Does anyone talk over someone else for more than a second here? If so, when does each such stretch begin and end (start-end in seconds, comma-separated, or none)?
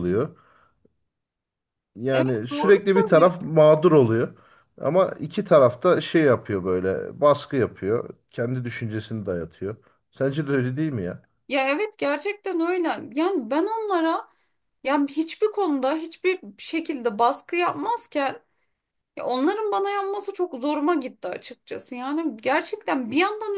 2.1-3.4